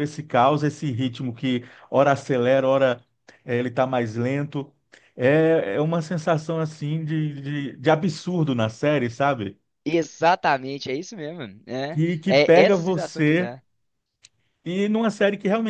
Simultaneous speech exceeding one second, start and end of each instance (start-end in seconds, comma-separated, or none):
11.9-13.5